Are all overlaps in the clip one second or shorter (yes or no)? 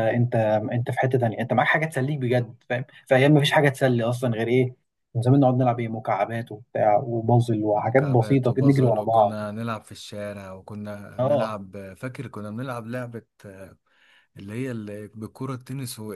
no